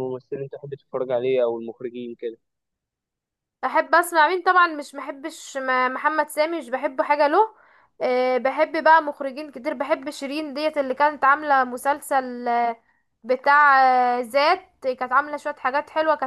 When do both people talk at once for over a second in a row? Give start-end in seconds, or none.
none